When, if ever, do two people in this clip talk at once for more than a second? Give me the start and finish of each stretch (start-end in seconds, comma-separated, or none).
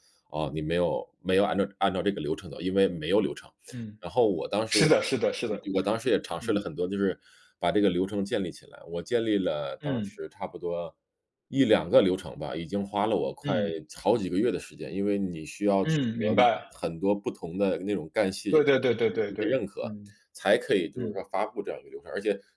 18.5-19.9